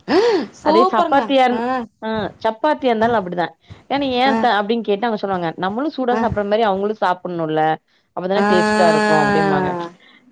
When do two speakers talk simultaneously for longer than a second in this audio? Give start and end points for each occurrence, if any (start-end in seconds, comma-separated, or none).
8.4-9.7